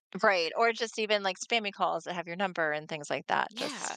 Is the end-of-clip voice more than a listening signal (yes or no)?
yes